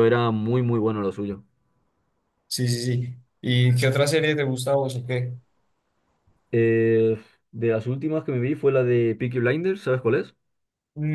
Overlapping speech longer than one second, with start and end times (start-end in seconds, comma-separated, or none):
none